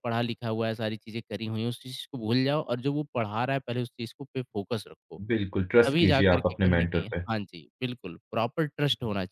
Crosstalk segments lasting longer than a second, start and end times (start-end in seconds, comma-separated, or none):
5.9-7.2